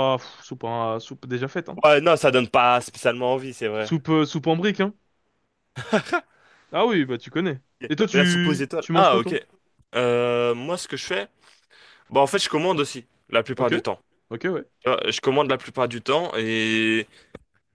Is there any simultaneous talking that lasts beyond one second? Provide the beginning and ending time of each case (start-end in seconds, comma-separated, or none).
7.8-9.3